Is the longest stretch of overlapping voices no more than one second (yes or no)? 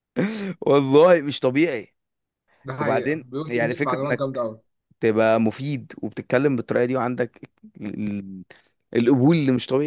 no